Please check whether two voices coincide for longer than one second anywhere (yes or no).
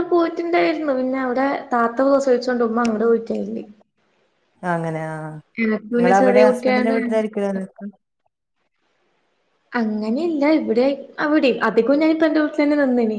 yes